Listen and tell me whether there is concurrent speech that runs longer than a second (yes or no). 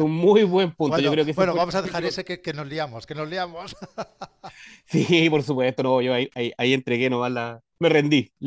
yes